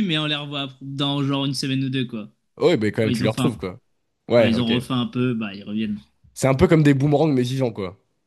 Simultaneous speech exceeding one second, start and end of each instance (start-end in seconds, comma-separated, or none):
none